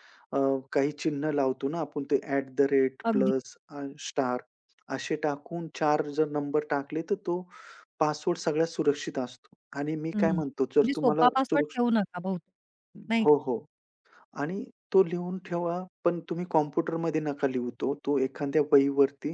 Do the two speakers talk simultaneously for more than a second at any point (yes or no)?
yes